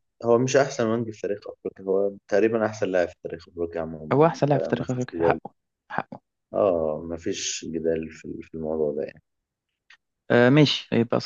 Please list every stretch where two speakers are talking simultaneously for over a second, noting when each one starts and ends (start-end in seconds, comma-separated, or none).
4.1-5.4